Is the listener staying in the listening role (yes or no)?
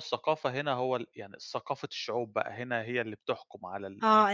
no